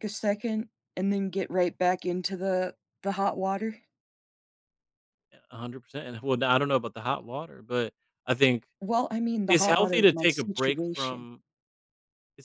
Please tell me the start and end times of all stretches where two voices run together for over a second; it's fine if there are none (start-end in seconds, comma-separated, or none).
9.5-11.3